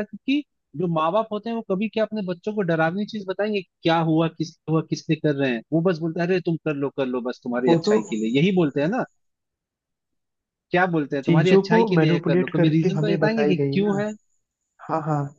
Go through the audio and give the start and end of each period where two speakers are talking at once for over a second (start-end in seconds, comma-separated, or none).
11.2-14.0